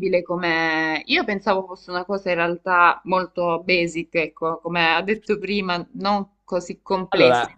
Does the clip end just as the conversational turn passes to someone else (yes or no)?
no